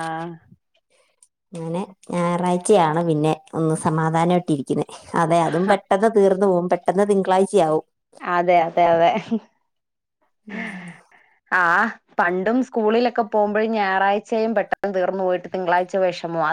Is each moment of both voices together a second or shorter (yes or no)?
yes